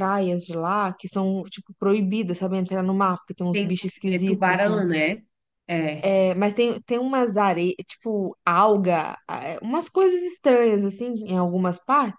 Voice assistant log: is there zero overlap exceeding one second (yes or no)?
no